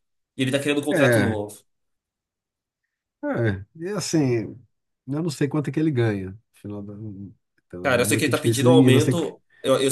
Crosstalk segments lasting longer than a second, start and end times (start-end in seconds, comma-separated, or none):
7.8-9.1